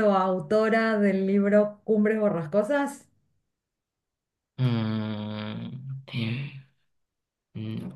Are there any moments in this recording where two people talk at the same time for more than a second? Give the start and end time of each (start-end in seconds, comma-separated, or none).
none